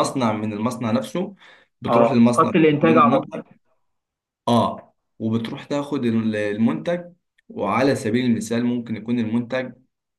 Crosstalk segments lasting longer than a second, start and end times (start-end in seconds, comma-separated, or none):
1.9-3.4